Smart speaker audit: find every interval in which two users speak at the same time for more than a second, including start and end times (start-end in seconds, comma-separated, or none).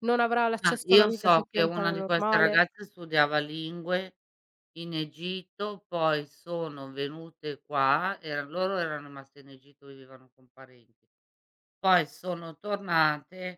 0.6-2.6